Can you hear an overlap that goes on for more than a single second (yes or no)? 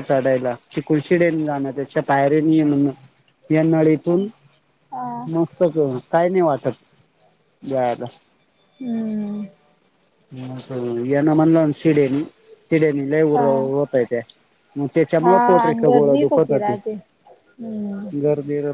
yes